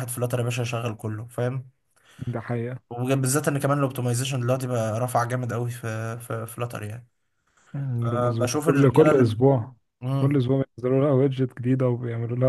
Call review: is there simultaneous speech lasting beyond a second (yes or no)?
yes